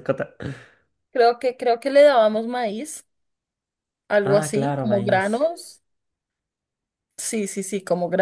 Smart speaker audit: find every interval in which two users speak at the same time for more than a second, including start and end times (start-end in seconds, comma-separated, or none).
4.2-5.5